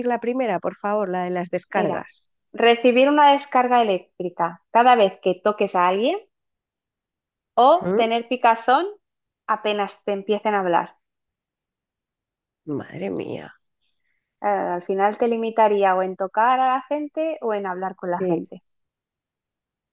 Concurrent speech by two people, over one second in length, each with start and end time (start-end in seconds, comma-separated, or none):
none